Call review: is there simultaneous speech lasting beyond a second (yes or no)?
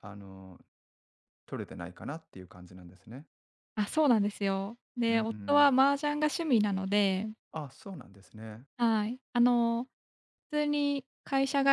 no